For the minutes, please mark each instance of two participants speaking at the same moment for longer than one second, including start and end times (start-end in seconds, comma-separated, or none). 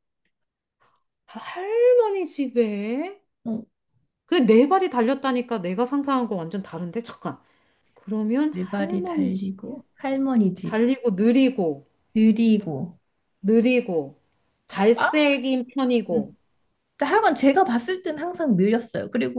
8.5-9.8